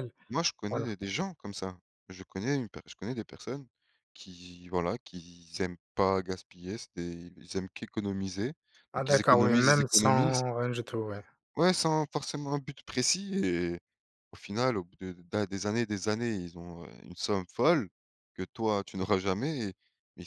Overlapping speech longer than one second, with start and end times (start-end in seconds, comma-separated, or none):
8.9-10.4